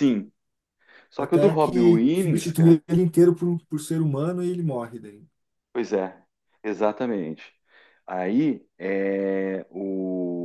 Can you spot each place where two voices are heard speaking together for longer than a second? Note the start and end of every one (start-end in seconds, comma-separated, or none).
1.2-2.8